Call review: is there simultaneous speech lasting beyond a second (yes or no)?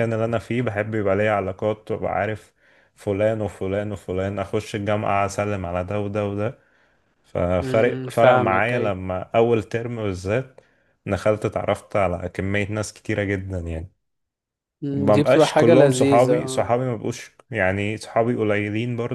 yes